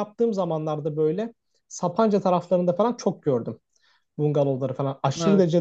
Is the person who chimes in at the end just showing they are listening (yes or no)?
yes